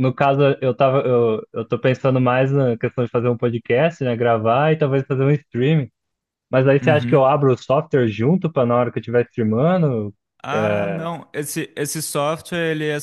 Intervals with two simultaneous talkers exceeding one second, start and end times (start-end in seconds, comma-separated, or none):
none